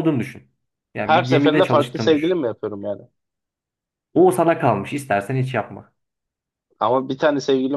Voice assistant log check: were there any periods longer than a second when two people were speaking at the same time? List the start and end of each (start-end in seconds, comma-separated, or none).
1.0-2.4